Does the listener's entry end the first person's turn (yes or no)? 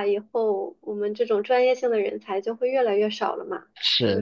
yes